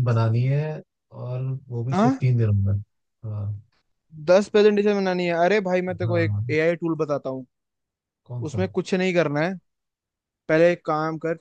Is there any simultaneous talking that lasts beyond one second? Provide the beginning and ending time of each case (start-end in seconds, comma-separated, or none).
none